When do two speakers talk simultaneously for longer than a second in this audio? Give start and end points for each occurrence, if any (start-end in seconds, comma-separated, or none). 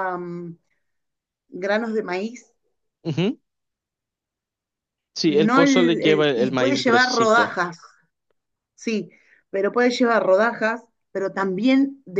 5.2-7.6